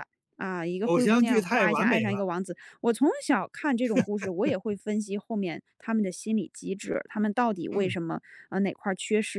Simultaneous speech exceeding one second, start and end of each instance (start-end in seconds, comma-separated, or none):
0.8-2.3